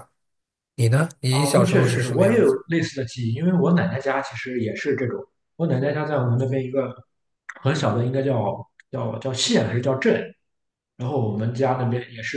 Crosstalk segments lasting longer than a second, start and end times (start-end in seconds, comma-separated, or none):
1.3-2.5